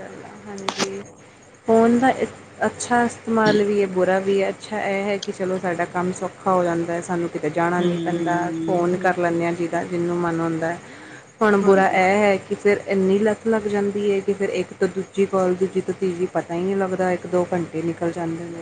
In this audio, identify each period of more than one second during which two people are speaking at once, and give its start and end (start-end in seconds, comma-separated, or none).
7.8-9.4